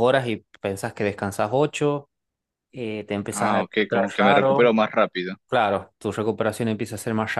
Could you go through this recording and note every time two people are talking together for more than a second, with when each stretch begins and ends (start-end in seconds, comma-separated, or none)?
3.3-4.8